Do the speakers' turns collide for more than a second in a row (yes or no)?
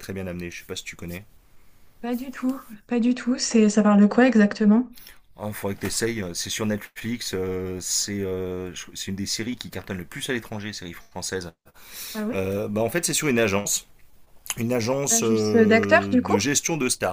yes